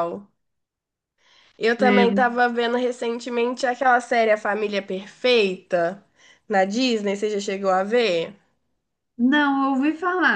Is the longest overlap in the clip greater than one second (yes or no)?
no